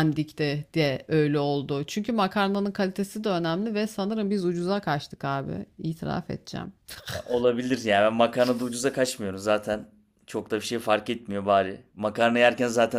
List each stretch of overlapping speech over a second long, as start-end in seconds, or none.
none